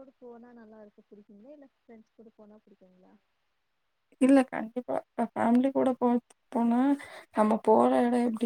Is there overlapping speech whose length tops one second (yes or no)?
no